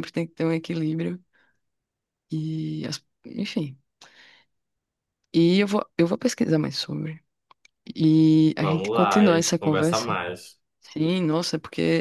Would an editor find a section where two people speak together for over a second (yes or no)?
yes